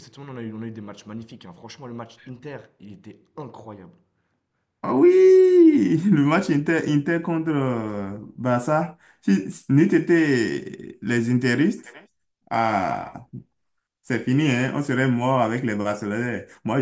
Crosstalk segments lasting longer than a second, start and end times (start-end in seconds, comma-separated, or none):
none